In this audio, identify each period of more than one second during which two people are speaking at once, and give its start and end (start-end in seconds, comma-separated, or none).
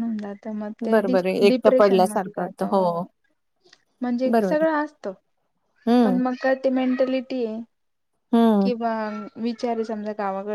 0.9-2.6